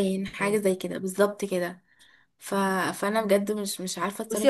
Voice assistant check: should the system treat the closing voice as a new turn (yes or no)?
yes